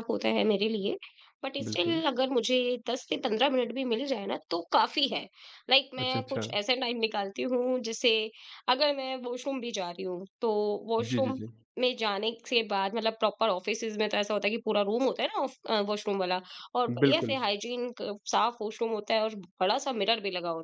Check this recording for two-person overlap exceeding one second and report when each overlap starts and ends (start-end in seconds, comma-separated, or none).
none